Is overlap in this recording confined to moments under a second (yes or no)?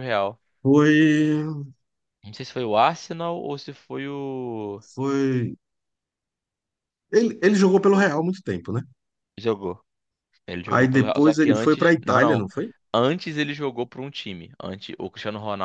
no